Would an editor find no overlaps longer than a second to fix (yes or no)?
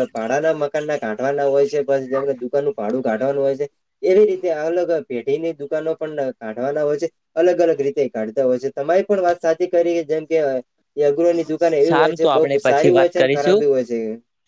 no